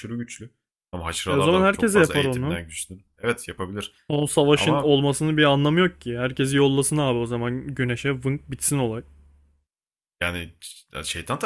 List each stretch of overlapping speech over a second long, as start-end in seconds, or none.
1.3-2.6